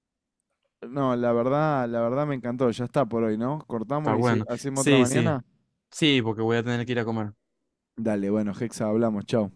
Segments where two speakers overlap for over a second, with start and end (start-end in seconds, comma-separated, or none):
4.0-5.4